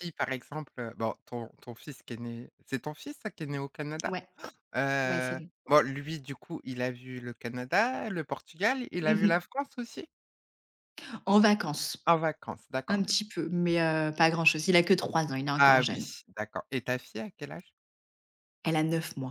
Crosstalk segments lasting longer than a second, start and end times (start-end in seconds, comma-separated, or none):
none